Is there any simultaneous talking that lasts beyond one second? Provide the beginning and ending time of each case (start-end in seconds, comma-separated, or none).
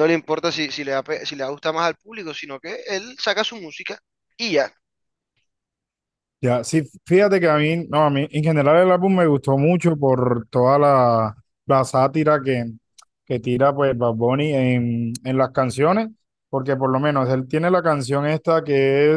none